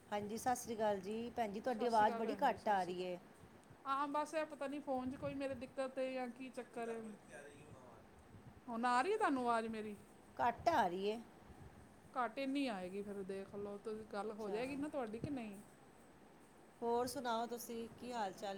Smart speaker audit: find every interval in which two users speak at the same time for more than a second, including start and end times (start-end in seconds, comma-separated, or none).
1.8-3.1